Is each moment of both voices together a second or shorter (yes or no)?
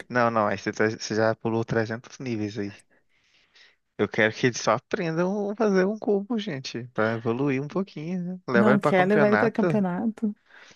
no